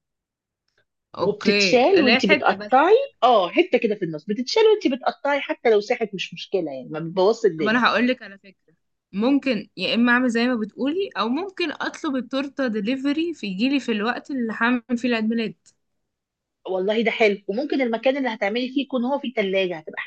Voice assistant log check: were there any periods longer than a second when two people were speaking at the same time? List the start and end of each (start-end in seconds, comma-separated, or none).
1.2-3.1